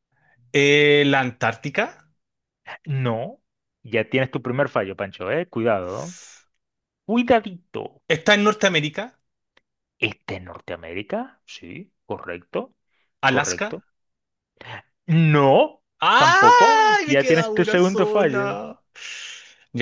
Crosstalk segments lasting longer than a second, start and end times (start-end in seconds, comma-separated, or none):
16.0-18.6